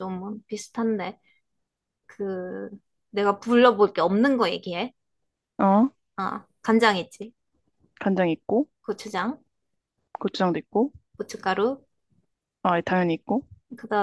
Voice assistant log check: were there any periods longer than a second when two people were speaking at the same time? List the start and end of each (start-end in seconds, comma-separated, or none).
none